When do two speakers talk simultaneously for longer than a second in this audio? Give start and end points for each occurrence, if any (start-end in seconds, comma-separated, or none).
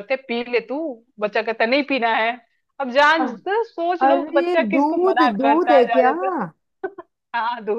4.1-6.1